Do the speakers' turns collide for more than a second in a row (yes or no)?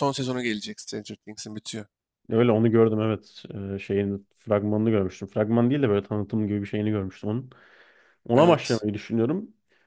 no